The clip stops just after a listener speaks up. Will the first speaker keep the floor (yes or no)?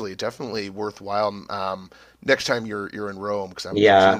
no